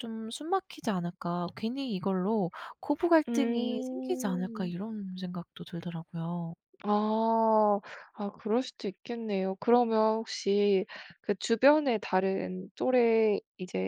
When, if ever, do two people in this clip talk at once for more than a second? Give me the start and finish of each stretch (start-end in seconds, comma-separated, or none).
3.3-4.7